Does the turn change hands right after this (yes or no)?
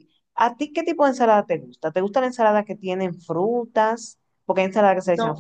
no